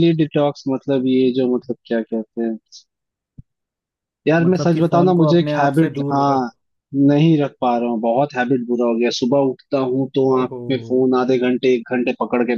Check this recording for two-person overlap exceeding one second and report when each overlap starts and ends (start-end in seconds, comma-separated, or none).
4.4-6.5